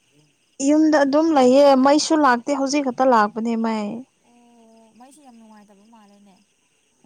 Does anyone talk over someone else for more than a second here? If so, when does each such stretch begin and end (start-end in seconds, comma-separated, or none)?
none